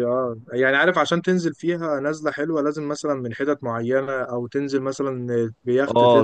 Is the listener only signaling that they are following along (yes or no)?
no